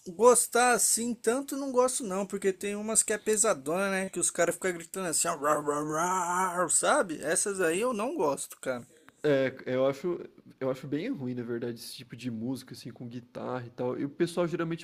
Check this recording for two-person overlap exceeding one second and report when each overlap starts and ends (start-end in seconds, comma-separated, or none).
none